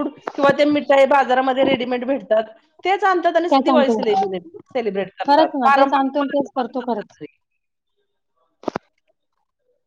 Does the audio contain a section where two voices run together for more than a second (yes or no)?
yes